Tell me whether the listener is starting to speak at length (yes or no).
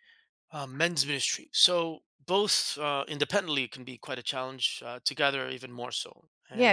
yes